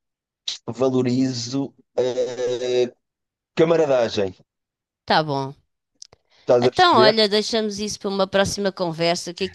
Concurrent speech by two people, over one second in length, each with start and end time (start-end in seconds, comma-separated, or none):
none